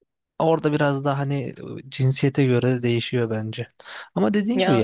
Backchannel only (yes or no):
yes